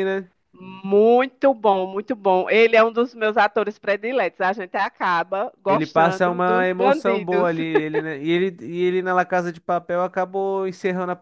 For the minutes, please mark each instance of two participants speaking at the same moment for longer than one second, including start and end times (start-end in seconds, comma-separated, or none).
5.7-7.5